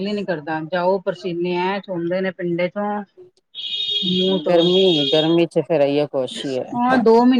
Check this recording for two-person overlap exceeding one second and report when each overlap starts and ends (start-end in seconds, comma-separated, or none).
none